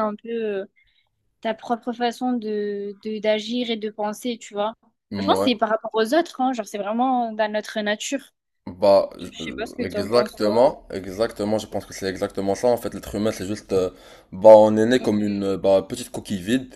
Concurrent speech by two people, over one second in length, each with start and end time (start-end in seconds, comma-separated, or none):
9.0-10.6